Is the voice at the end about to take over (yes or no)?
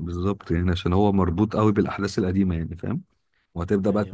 no